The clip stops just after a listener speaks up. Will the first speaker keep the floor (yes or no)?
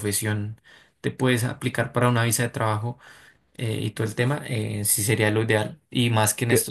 yes